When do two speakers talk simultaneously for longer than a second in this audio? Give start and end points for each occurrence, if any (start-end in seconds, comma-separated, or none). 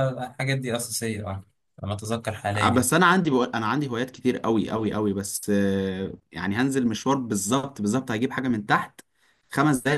none